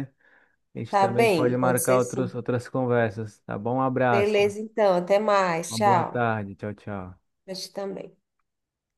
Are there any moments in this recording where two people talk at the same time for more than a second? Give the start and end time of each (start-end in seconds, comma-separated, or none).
0.9-2.3